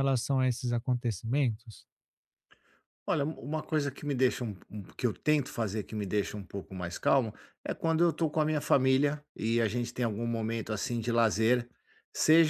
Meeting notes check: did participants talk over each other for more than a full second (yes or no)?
no